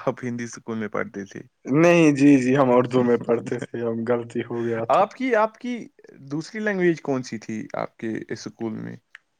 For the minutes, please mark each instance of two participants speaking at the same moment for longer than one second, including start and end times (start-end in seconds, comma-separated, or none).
none